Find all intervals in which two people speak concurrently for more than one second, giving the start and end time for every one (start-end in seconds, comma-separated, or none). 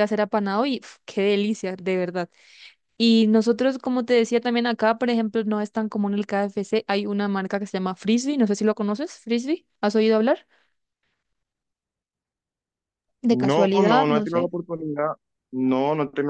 13.3-14.5